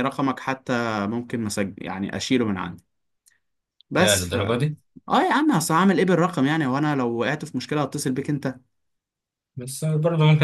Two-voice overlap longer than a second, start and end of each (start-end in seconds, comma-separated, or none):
none